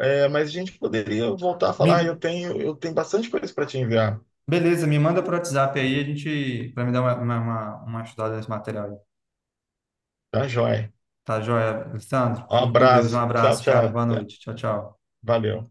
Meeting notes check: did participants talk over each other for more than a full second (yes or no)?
yes